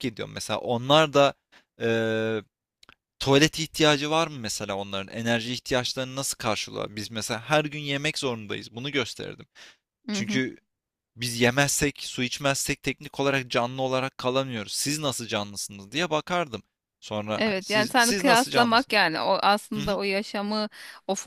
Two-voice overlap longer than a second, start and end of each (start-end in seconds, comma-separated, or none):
17.4-19.0